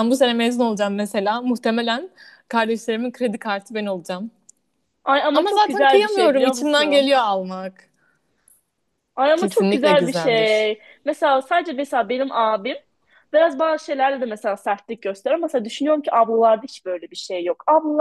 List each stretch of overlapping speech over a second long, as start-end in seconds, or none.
5.3-7.1, 9.4-10.7